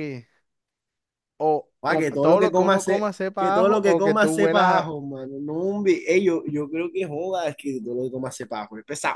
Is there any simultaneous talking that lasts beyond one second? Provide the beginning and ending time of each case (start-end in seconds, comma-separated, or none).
1.8-4.9